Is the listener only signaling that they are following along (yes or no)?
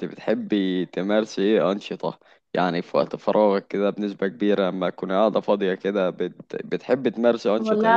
no